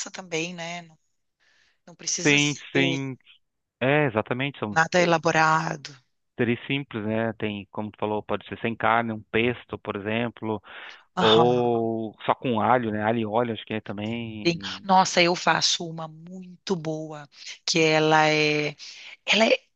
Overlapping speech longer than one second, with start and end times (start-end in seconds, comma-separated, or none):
none